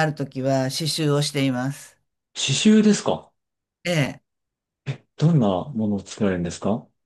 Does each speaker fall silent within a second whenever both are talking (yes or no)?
yes